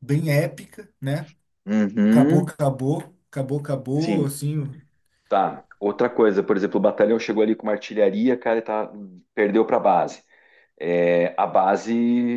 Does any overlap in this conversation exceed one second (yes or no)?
no